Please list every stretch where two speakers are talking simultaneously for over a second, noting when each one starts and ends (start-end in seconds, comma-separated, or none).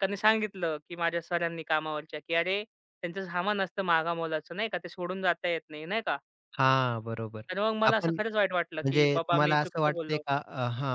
8.8-10.2